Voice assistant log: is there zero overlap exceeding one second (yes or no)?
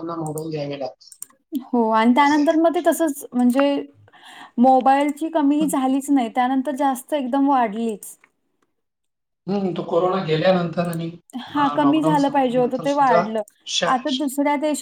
no